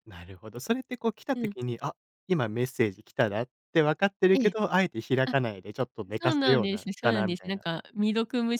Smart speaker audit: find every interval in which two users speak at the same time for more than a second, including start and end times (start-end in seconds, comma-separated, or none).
6.2-7.6